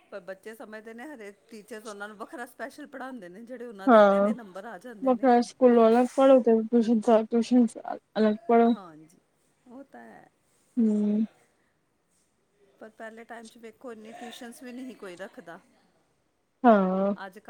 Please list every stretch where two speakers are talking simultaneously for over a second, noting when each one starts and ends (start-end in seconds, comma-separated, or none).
none